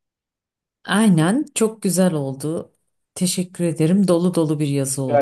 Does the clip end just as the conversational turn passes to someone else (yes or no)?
yes